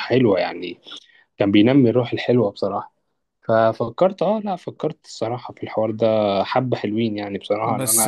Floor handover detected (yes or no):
yes